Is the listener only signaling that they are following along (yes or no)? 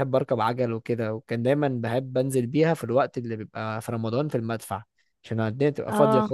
yes